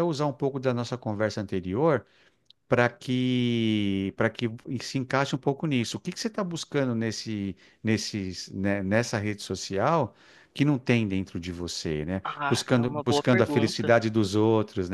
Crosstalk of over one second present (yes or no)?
yes